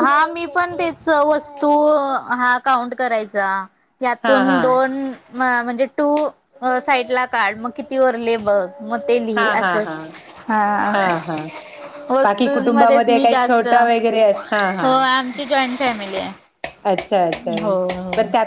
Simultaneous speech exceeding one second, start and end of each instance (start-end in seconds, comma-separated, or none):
12.2-14.9